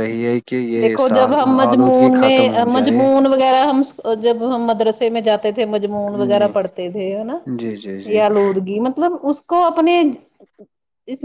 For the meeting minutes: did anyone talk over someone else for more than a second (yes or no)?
yes